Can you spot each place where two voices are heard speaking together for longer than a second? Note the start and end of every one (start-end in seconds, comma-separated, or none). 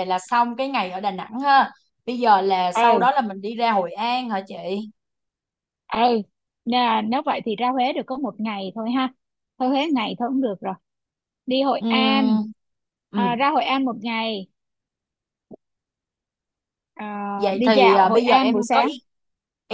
17.6-18.9